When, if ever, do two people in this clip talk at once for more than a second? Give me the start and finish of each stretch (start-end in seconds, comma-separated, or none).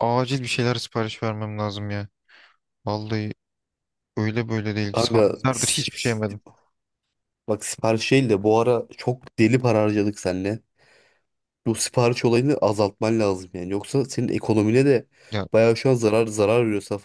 4.9-6.4